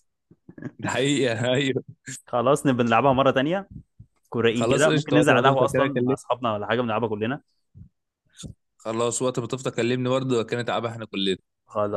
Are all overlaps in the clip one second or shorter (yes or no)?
no